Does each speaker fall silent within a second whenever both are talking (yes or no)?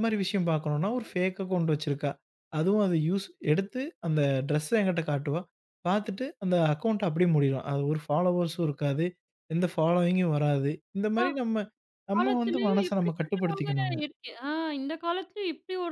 no